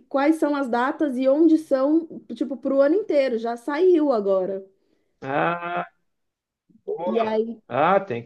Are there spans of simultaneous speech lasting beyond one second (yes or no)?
no